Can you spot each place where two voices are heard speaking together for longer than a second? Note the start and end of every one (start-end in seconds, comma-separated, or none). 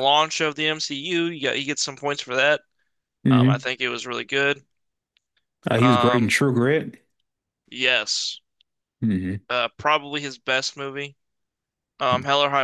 none